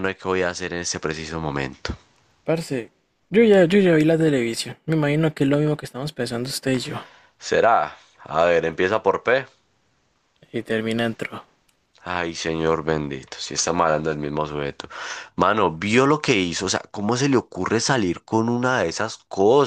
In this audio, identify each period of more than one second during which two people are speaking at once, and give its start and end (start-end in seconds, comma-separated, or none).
none